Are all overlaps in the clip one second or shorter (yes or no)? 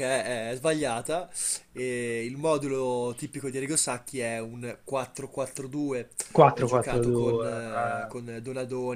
no